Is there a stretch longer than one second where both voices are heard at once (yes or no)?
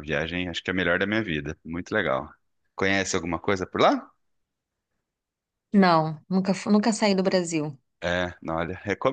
no